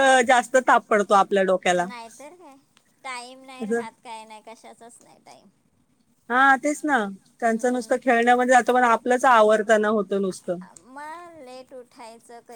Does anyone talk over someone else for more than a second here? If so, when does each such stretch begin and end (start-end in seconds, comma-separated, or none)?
none